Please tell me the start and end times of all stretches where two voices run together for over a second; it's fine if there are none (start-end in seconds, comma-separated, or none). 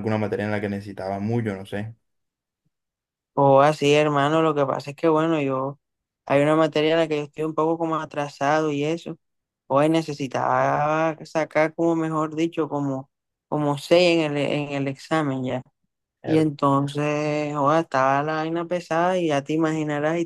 none